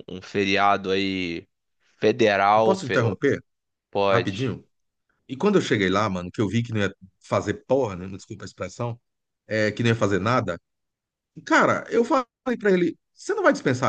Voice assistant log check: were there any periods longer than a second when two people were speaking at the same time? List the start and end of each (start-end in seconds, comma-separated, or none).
none